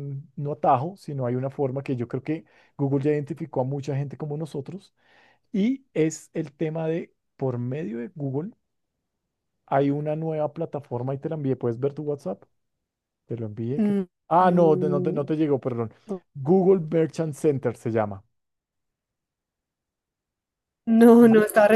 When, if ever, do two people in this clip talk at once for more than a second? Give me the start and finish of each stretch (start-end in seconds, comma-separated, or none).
13.8-15.2